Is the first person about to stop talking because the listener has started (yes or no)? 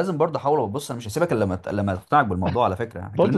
yes